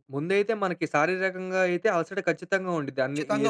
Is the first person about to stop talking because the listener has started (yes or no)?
no